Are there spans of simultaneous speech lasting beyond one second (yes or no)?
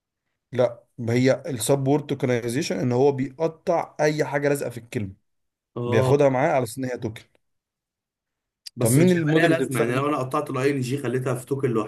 yes